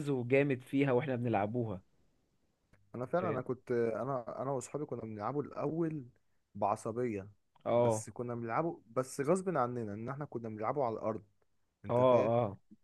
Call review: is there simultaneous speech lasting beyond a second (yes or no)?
no